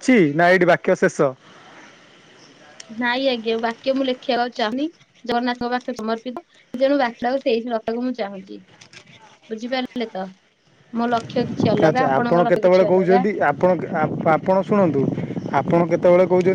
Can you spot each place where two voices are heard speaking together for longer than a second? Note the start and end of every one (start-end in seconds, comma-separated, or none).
11.8-13.3